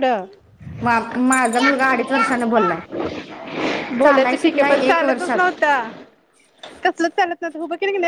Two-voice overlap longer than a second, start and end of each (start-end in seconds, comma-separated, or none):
4.1-5.5